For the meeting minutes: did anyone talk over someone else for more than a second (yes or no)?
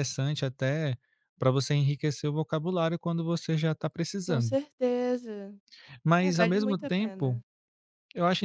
yes